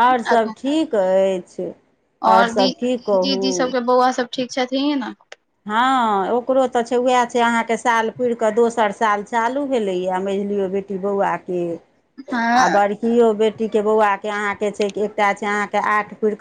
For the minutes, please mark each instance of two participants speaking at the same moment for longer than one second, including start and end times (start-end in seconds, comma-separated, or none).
2.3-3.7